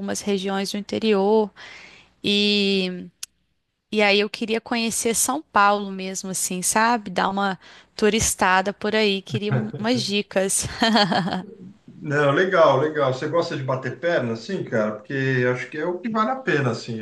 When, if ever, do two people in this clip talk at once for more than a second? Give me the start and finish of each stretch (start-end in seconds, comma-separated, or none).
none